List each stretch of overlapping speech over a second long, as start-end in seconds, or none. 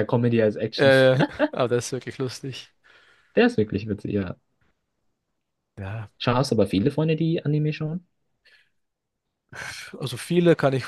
none